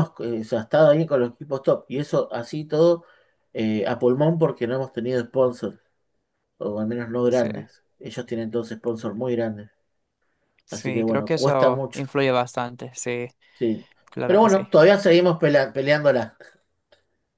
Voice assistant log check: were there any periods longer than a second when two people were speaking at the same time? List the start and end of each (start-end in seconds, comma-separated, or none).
10.7-12.0